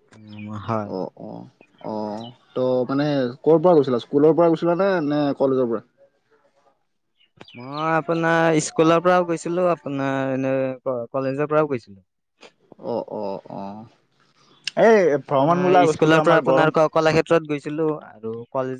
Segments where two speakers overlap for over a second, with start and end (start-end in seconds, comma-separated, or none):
15.3-16.7